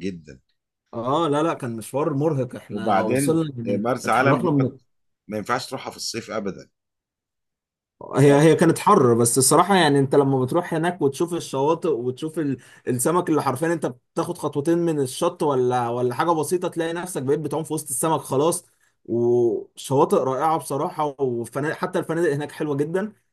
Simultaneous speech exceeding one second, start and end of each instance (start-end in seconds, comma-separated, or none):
2.7-4.8